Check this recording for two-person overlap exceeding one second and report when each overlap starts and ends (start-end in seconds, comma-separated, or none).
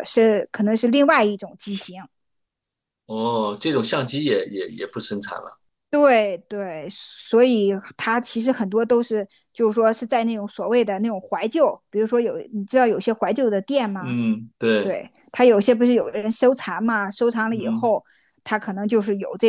none